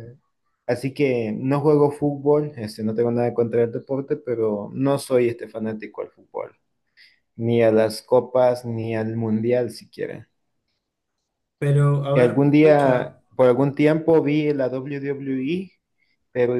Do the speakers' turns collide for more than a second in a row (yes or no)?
yes